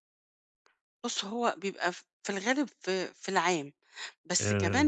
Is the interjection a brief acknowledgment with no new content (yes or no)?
yes